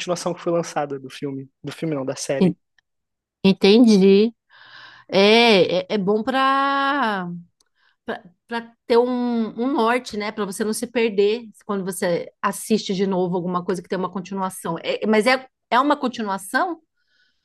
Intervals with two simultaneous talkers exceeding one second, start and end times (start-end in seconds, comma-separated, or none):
none